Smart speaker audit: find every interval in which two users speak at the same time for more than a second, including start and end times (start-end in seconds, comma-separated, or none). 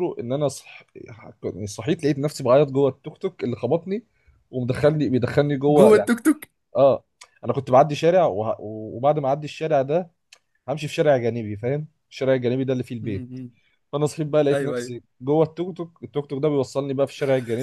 none